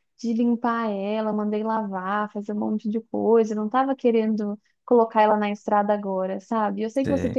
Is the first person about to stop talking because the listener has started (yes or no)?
no